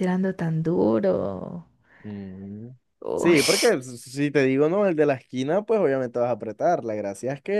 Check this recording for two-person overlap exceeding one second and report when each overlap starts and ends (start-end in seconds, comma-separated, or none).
none